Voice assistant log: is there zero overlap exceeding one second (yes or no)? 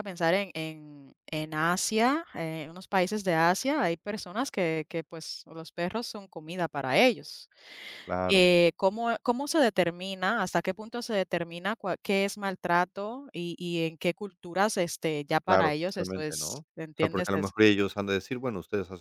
no